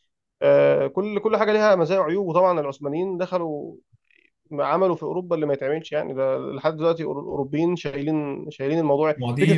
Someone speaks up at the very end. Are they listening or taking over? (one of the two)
taking over